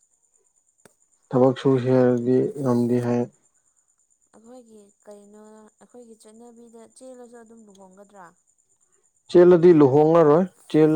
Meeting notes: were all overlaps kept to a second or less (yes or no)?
yes